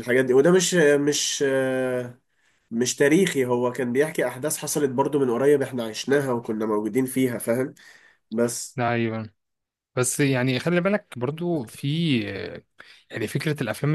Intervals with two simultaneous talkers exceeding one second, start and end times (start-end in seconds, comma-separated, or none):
none